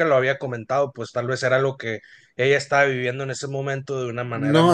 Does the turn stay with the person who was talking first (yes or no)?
no